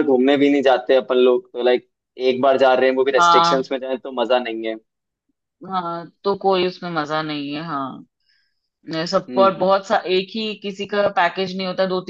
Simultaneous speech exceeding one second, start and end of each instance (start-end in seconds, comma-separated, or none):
none